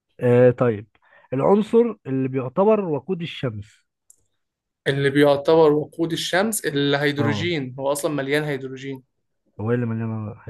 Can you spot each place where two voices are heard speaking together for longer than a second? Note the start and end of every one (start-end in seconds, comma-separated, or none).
none